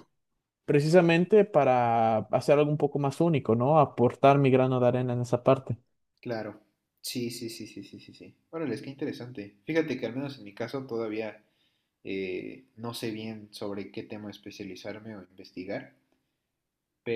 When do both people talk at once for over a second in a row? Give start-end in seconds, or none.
none